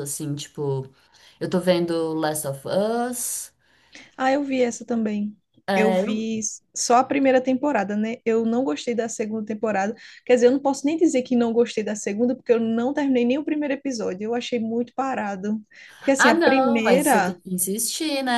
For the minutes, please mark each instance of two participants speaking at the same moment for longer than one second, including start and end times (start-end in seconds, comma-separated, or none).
16.2-17.4